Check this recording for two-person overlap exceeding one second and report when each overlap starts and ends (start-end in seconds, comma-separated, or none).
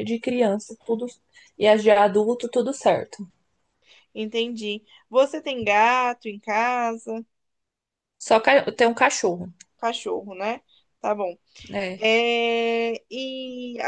none